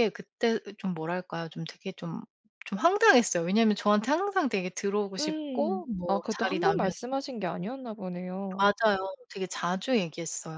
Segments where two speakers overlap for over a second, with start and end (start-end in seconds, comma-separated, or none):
5.2-6.9